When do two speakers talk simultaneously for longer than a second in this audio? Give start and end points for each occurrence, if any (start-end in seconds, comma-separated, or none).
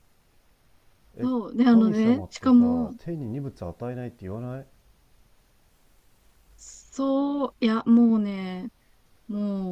1.2-2.9